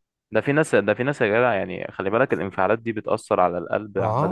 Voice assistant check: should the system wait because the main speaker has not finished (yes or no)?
no